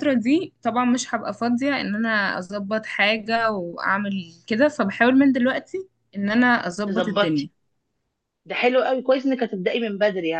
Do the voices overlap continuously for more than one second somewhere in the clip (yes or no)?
no